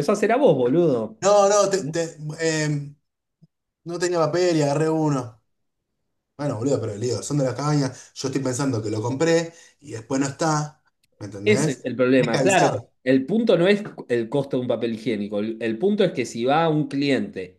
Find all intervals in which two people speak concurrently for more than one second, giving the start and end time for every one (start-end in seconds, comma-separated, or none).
11.4-12.9